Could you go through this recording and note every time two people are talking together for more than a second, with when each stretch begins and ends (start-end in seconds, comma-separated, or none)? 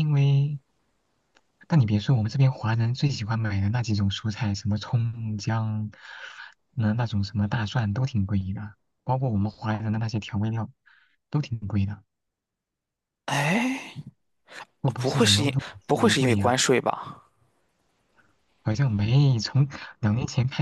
14.8-16.5